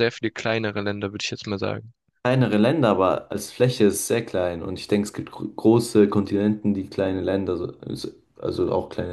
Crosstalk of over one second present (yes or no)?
no